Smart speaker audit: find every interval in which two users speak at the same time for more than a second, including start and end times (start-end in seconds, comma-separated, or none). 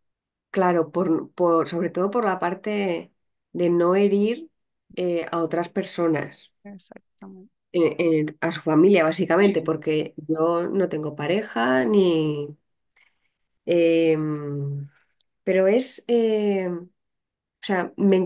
none